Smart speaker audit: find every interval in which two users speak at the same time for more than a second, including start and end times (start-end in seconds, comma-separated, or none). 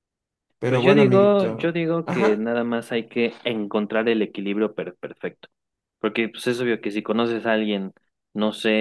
0.7-2.4